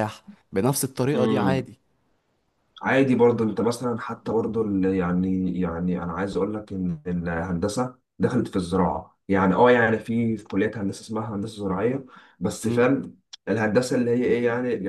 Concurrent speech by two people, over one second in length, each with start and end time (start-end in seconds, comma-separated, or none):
none